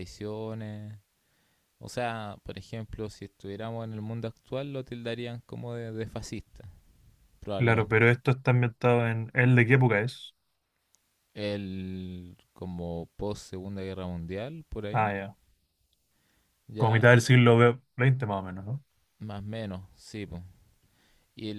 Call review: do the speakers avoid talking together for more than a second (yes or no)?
yes